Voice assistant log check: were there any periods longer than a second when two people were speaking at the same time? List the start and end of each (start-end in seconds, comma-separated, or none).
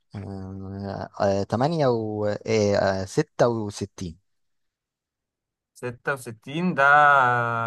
none